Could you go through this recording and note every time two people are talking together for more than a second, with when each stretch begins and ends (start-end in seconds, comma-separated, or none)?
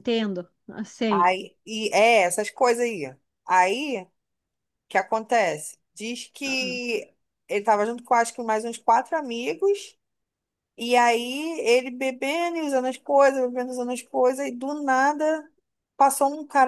none